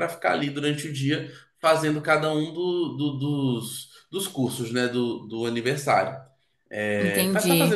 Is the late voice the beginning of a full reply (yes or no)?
yes